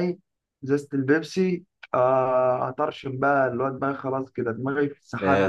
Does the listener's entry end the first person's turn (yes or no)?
yes